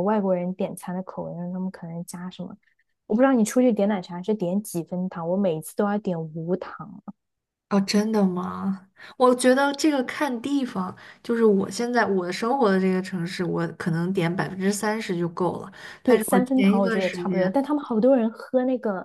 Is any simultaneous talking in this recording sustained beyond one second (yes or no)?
yes